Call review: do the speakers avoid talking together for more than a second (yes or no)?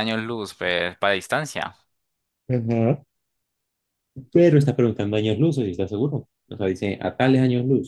yes